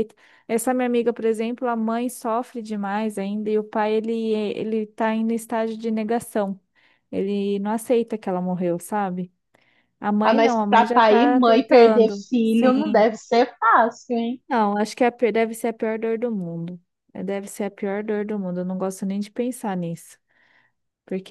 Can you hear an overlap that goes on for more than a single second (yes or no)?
yes